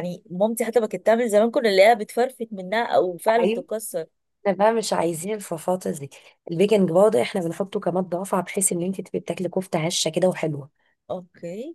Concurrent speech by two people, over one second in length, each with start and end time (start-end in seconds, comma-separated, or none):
none